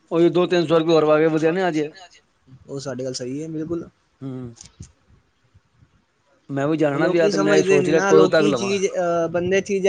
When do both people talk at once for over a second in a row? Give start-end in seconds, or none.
6.9-8.7